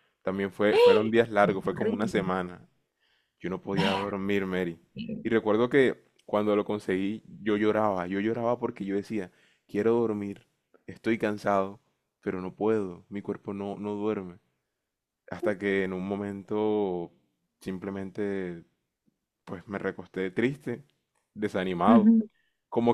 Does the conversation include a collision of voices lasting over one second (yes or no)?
yes